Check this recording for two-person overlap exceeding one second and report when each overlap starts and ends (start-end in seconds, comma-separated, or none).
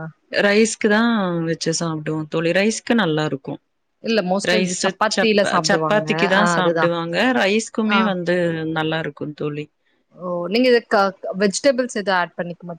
4.5-6.8